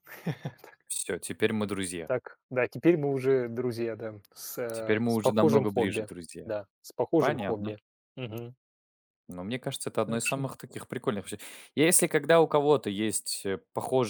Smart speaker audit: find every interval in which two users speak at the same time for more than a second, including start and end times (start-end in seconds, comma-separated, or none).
4.7-6.5